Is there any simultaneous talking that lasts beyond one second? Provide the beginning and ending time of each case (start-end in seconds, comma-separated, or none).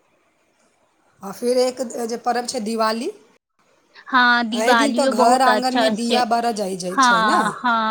4.5-6.2